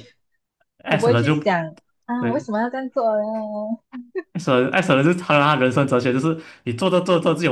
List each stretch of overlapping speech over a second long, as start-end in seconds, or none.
none